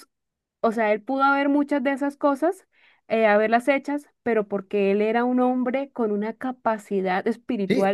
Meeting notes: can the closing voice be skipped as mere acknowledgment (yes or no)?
no